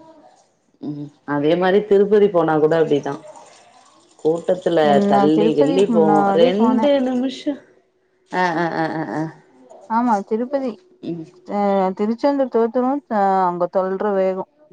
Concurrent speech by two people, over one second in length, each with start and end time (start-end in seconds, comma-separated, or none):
4.9-6.9